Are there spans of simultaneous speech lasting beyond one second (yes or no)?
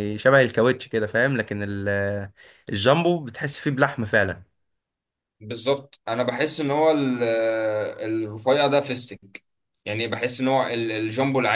no